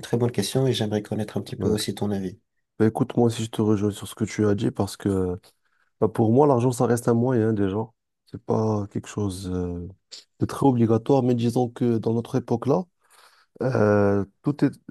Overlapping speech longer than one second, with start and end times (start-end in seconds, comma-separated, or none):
none